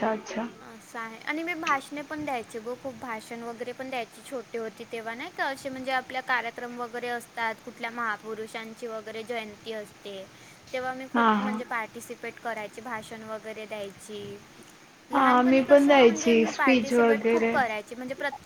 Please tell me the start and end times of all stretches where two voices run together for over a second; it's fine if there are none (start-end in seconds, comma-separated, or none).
15.1-17.6